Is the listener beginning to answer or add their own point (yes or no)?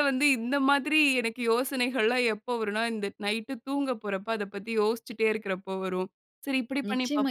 yes